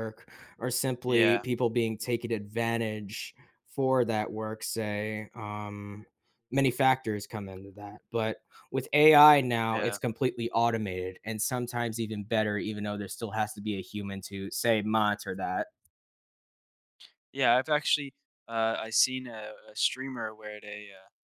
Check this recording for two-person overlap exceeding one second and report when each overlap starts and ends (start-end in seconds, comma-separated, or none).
none